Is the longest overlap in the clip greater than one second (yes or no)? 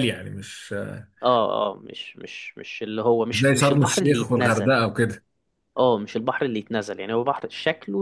yes